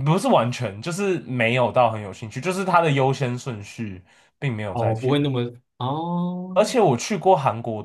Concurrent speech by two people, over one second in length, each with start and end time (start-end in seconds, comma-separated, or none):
none